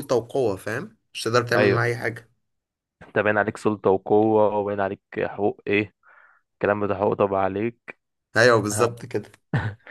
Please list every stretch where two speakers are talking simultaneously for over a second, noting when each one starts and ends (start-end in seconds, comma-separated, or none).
none